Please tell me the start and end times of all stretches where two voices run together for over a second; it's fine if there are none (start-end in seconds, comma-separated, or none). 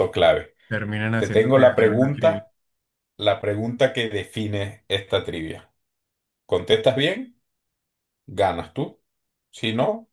1.1-2.4